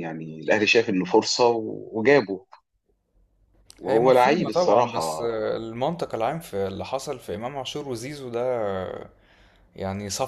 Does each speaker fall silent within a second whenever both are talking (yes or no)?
no